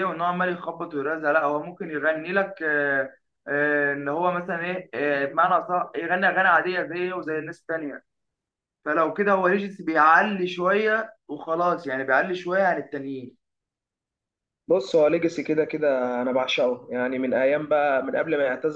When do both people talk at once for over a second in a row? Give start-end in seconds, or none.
none